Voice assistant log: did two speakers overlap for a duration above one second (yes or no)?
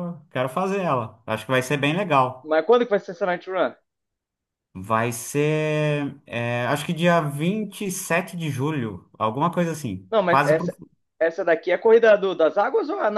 no